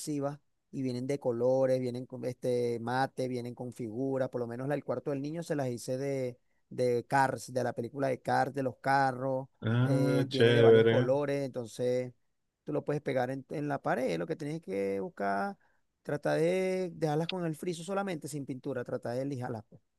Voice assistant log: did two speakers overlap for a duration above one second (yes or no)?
yes